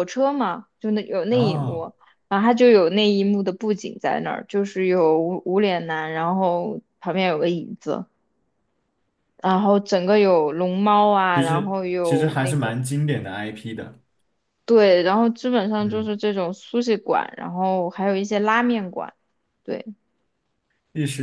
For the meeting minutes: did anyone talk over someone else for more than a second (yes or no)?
yes